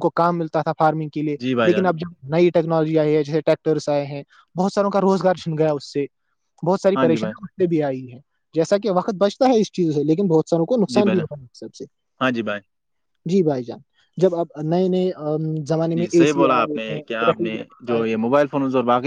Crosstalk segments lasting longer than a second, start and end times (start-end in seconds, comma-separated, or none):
16.0-18.0